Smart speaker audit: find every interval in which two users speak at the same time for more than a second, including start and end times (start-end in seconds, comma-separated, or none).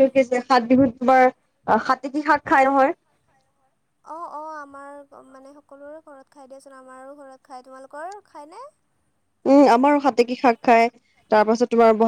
none